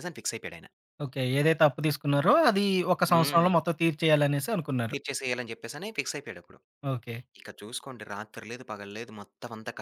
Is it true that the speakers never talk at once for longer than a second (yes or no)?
yes